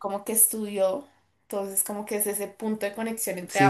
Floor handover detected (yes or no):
yes